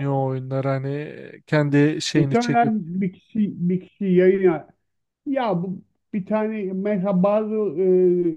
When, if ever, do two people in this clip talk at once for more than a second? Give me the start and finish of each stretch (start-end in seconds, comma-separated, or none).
none